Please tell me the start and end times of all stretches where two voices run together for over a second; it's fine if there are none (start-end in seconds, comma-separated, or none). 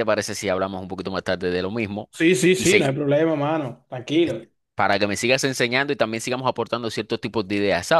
none